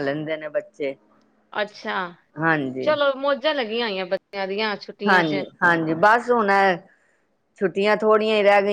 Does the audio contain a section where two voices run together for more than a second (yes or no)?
no